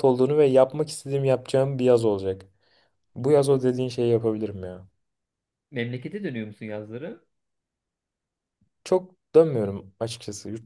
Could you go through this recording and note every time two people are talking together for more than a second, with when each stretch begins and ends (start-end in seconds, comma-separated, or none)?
none